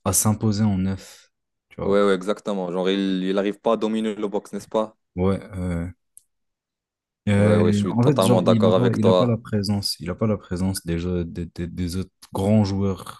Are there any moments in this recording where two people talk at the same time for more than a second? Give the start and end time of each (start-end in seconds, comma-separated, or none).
7.4-9.4